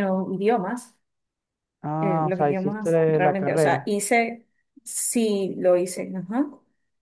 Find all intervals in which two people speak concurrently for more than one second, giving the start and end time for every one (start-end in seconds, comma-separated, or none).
2.0-3.9